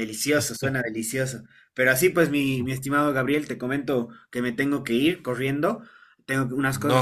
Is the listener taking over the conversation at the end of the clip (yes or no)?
no